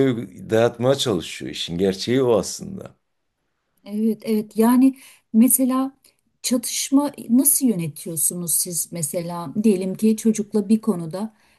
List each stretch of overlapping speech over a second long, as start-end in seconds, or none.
none